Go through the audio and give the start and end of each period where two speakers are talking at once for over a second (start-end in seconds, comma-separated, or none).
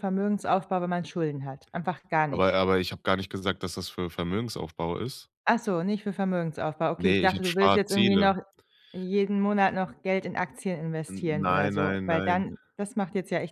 7.0-8.3, 11.1-12.4